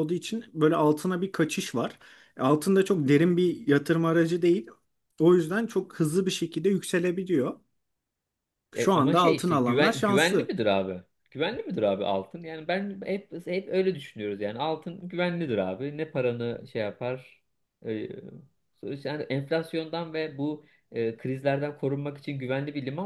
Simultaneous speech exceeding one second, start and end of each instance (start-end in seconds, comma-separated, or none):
8.7-10.5